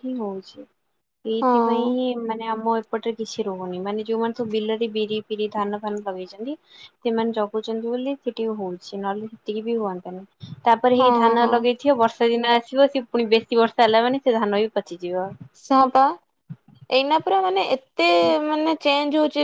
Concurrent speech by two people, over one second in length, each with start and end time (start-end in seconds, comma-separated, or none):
none